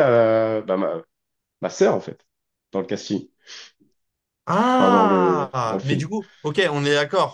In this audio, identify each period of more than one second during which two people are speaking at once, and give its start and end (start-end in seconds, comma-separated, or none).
4.8-6.1